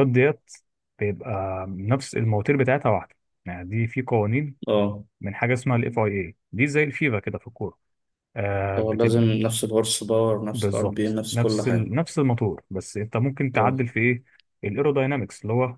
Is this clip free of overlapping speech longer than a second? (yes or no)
no